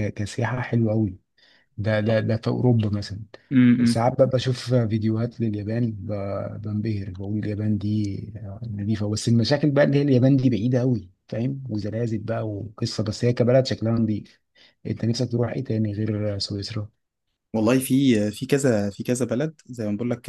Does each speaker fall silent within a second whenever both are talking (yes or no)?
yes